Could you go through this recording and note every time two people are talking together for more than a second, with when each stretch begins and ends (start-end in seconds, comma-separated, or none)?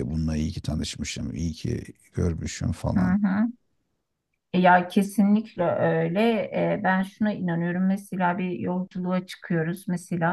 none